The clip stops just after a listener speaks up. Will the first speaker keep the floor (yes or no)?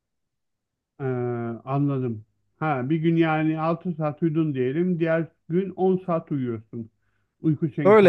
no